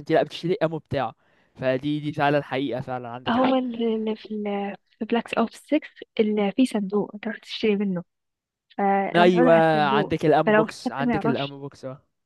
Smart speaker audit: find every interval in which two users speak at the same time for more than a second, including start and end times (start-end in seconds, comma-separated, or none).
9.2-11.6